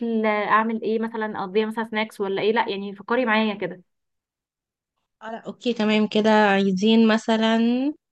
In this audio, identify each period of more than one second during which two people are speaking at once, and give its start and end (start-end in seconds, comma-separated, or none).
none